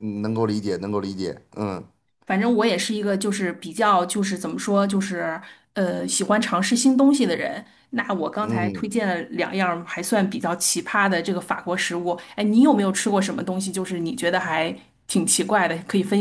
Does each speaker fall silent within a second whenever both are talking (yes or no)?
yes